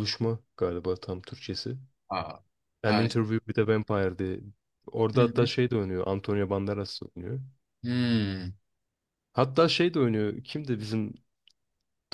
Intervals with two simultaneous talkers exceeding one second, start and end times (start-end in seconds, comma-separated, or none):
none